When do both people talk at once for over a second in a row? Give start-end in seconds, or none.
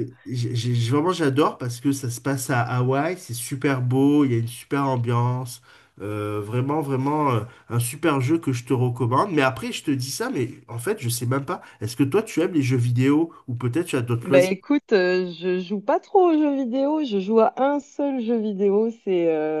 none